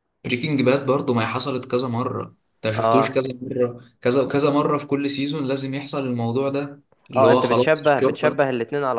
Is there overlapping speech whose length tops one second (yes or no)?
yes